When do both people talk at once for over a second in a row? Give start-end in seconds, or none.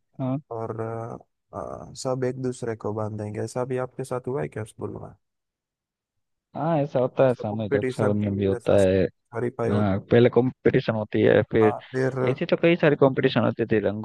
7.3-8.8